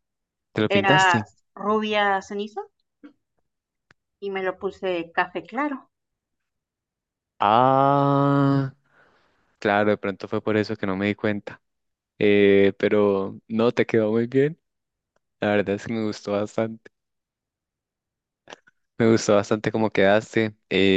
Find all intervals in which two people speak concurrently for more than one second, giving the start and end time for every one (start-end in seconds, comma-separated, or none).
none